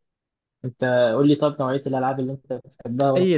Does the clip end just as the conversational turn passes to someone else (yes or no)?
yes